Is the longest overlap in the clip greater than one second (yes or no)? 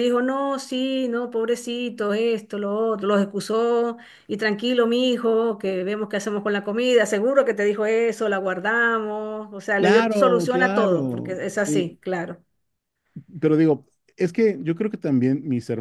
yes